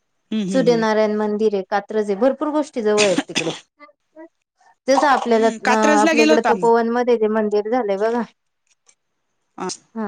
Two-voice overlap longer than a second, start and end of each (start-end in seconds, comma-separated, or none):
5.3-6.7